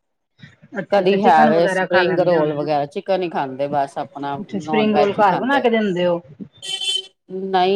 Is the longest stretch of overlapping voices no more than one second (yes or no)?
no